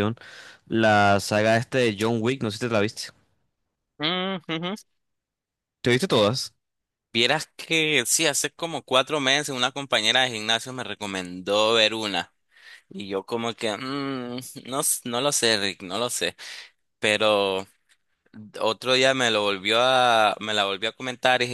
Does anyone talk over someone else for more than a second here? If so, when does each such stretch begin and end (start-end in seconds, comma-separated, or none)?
none